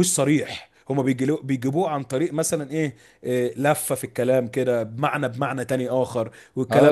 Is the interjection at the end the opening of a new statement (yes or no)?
yes